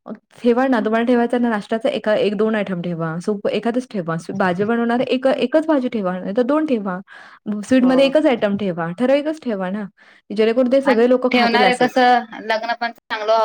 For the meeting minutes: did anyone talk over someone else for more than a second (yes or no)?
no